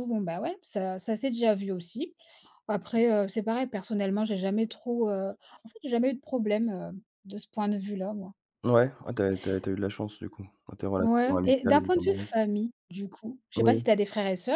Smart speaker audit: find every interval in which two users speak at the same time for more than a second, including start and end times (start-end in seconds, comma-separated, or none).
11.0-12.3